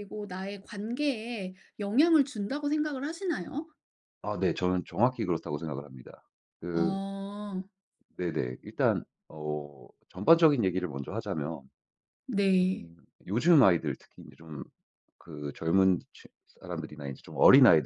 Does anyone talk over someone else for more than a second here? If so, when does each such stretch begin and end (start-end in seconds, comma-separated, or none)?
none